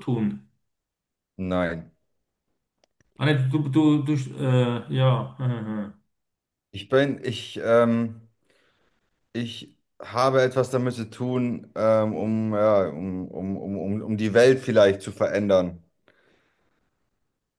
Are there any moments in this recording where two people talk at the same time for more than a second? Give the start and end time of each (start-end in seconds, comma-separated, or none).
none